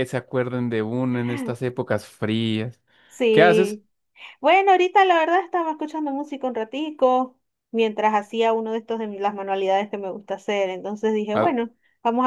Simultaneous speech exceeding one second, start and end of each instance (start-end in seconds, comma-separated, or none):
none